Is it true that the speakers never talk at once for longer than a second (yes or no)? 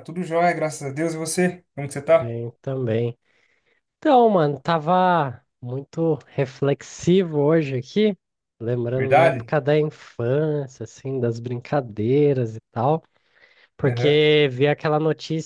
yes